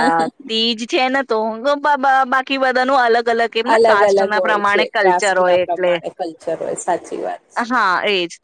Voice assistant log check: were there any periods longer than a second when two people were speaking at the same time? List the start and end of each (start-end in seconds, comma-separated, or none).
3.7-5.9